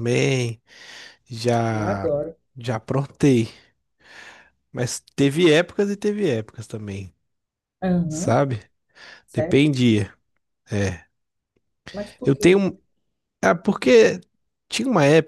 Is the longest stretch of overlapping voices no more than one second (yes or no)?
yes